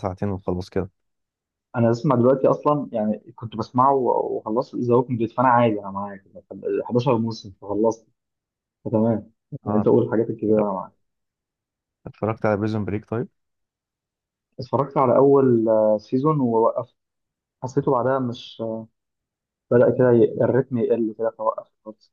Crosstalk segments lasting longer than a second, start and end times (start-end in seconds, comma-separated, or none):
none